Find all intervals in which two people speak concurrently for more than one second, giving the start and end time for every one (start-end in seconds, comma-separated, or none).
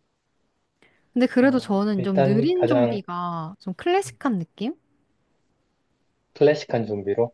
1.4-3.0